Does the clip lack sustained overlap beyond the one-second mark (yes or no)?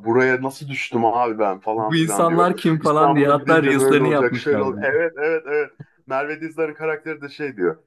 no